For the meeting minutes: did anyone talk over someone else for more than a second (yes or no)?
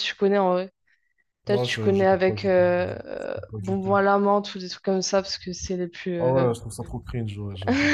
yes